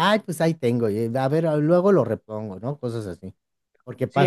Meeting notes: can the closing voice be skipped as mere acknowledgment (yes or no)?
no